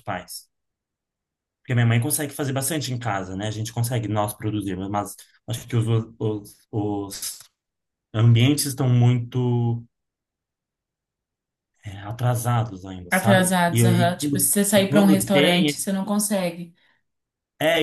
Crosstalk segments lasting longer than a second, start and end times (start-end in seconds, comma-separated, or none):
13.1-15.7